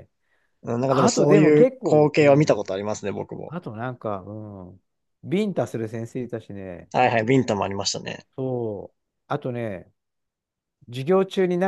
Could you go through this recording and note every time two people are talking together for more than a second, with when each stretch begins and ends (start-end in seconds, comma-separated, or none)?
0.9-2.6